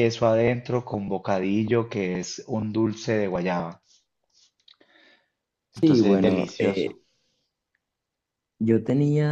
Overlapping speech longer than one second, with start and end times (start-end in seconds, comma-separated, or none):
5.8-7.0